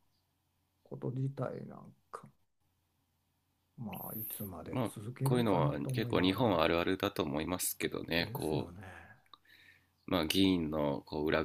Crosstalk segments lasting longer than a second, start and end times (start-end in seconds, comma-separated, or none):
4.7-6.6